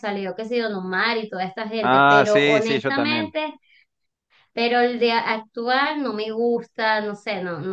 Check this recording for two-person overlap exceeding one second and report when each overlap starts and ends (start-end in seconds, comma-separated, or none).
1.8-3.4